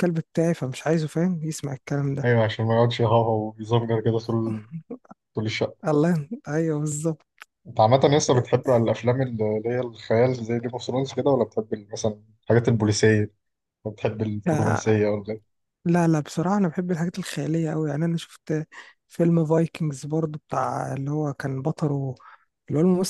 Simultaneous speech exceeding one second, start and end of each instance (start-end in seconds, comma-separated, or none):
none